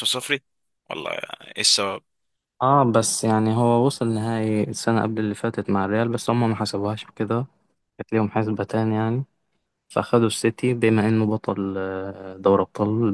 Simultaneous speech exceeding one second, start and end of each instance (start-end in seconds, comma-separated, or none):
none